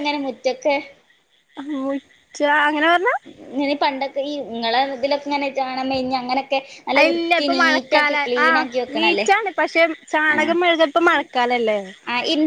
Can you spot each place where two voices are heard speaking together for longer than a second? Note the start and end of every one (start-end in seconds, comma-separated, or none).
7.0-9.3